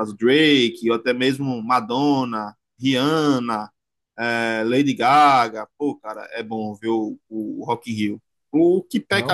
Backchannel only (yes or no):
yes